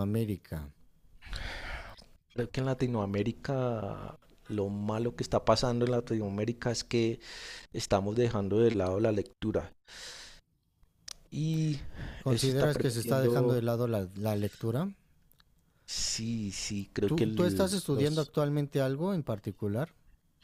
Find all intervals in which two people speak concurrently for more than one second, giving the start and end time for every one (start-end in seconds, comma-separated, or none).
12.3-13.6, 17.0-18.3